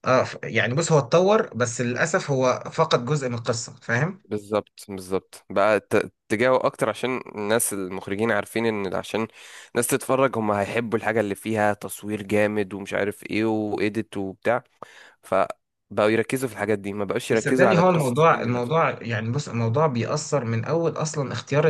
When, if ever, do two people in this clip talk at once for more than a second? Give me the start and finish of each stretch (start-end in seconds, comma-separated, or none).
17.3-18.8